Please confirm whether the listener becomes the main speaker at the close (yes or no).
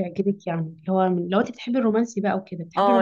yes